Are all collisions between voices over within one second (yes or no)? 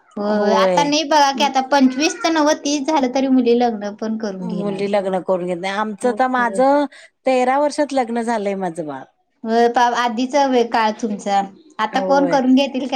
yes